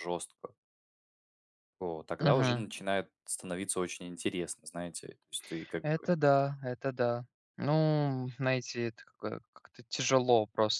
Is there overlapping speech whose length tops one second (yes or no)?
no